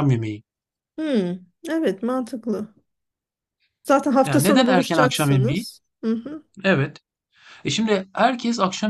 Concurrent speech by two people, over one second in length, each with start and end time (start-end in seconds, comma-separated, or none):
4.2-5.6